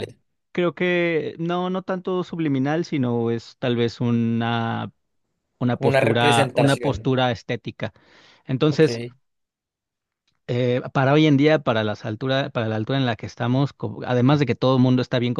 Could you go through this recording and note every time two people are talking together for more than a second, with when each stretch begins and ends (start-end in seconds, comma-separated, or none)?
5.7-7.1